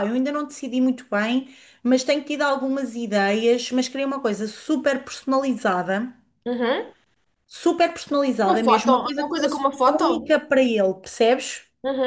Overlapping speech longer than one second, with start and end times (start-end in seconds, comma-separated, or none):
8.5-10.4